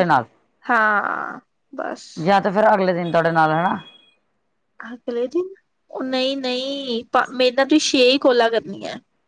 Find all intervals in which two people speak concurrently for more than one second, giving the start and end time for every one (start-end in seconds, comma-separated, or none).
none